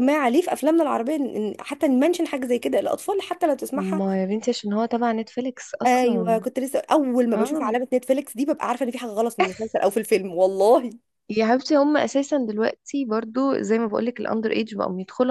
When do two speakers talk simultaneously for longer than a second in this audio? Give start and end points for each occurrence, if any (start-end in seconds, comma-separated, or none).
none